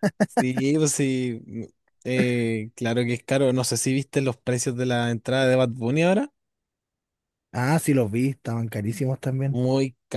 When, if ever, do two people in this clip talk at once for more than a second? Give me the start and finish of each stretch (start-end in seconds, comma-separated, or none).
none